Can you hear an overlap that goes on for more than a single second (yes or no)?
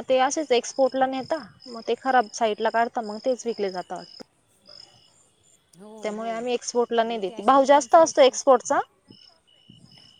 yes